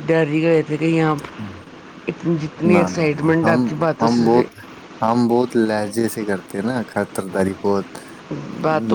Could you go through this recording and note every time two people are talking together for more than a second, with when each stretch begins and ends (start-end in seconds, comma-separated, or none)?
none